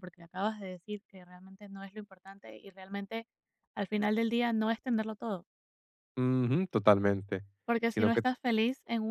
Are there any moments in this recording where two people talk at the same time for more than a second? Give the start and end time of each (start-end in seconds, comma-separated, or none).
none